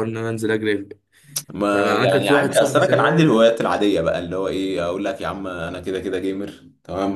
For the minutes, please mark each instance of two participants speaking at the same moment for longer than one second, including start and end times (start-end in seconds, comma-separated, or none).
1.7-3.3